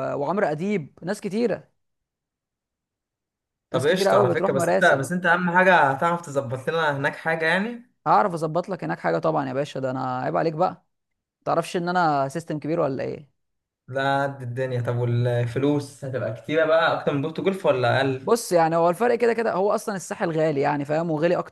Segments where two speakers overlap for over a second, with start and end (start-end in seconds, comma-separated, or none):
3.7-5.0